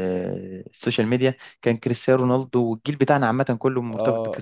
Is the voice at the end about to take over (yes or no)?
yes